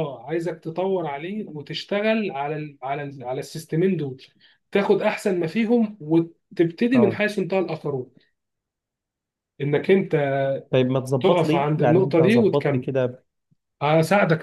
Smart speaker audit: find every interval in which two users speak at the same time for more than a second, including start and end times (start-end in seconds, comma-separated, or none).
11.2-12.8